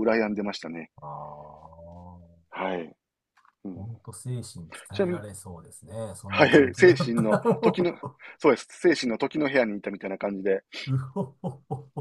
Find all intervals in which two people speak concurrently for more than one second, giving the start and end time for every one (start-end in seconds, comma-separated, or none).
6.3-8.0